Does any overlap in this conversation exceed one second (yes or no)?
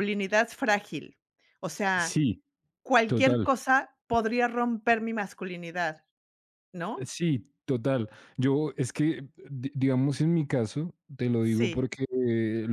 no